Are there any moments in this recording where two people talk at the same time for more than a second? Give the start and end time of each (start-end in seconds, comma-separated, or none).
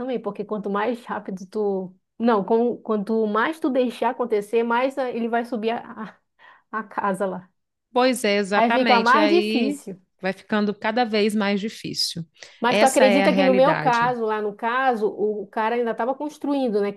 8.5-9.8, 12.7-14.2